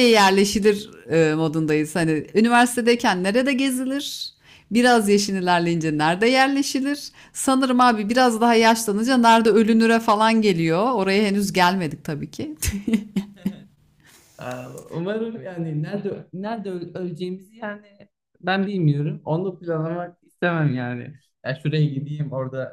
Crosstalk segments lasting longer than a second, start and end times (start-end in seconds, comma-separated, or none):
none